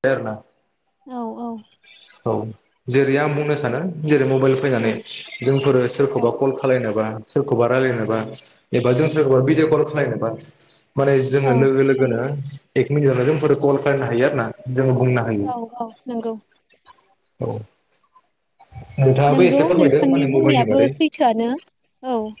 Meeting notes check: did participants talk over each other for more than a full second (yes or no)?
yes